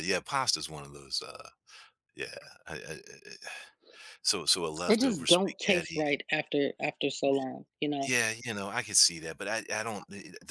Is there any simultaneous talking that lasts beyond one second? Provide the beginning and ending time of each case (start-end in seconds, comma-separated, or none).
4.9-6.2